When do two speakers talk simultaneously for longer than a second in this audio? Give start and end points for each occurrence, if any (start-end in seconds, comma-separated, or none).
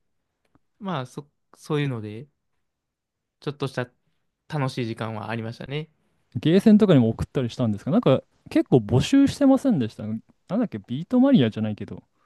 none